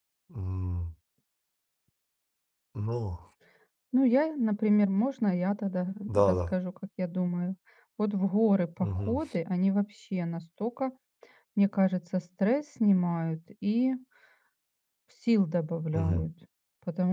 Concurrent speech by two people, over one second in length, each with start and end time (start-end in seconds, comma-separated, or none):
none